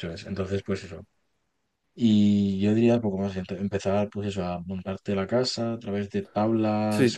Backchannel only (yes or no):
no